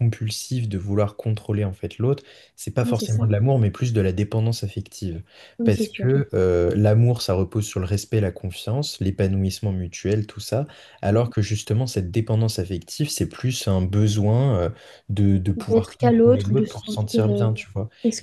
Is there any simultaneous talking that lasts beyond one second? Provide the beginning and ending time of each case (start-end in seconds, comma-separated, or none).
15.6-17.5